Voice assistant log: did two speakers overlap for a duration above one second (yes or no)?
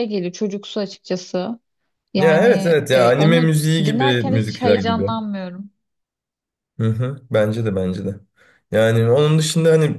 yes